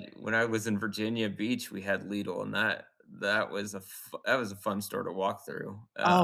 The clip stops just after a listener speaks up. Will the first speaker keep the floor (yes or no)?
no